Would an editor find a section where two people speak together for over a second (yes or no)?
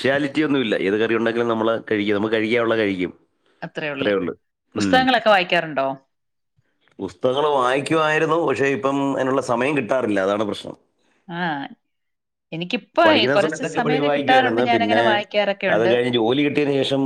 yes